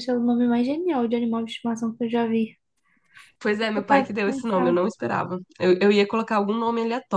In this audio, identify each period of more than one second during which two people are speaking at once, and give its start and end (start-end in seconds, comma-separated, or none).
3.6-4.8